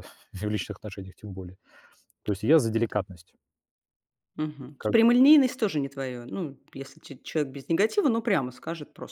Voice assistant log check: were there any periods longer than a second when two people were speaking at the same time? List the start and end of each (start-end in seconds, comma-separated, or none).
none